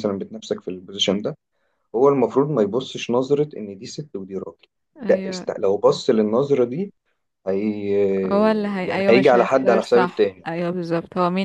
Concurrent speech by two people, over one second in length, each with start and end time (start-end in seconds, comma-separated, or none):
8.9-10.5